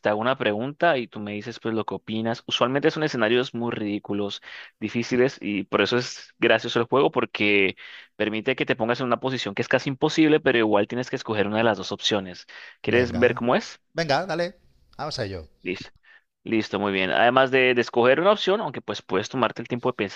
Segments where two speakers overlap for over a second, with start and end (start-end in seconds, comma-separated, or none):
none